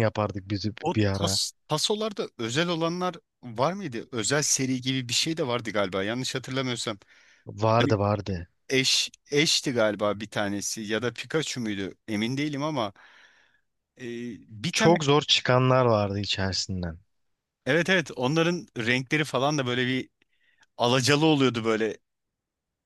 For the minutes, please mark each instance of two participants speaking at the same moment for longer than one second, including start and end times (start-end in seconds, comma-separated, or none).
none